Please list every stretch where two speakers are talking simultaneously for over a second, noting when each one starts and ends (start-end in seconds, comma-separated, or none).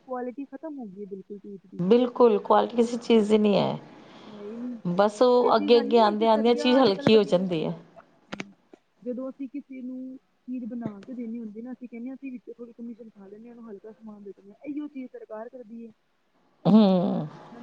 5.5-7.7